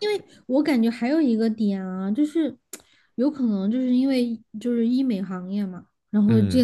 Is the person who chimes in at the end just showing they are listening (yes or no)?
yes